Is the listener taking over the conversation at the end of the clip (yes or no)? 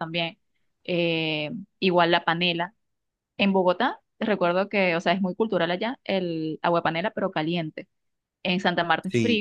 no